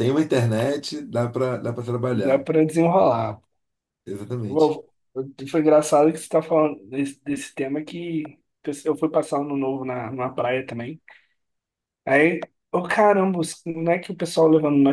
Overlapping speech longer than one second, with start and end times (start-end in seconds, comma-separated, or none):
none